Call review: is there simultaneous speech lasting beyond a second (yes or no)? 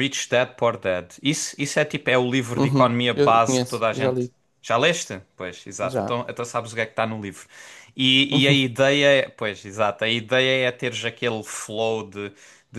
yes